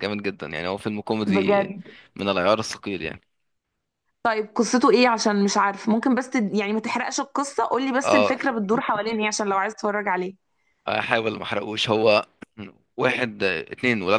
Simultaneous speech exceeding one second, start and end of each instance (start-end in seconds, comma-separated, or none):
none